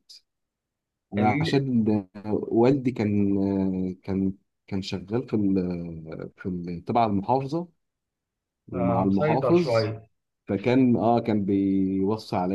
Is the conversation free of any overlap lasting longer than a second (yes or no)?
no